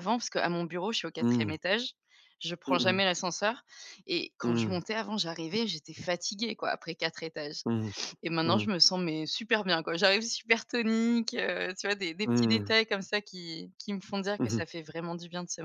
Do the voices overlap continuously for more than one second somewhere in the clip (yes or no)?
no